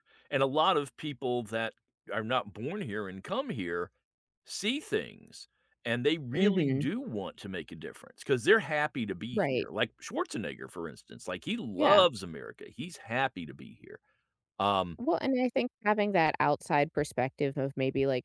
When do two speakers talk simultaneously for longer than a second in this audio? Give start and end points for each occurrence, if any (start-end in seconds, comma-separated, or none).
none